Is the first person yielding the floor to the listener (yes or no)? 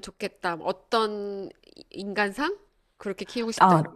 yes